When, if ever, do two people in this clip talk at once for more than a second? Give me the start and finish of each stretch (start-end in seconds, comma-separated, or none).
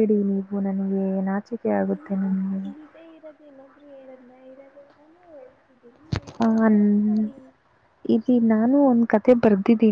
none